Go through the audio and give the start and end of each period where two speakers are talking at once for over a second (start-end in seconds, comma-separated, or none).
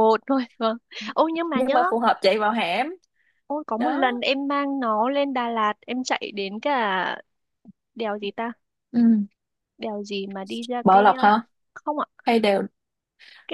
none